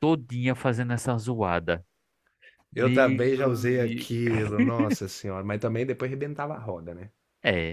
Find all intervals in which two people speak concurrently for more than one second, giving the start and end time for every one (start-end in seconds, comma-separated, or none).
2.7-4.1